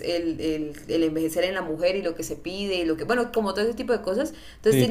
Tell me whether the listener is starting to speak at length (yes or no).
no